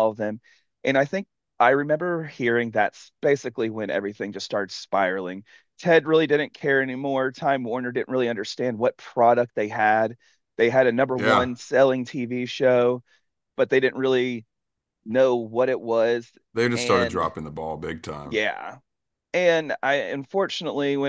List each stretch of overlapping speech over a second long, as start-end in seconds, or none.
none